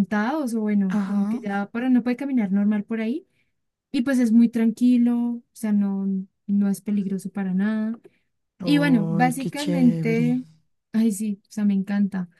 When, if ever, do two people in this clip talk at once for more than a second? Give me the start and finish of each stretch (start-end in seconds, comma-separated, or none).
8.6-10.3